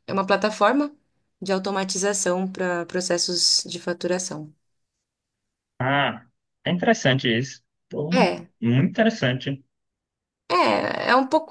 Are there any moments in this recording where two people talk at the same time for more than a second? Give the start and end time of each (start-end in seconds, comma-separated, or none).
none